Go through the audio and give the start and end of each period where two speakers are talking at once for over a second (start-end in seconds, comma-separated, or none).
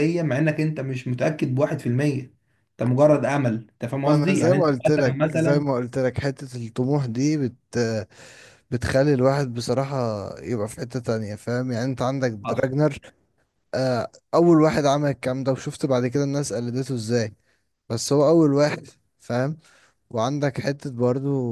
4.0-5.8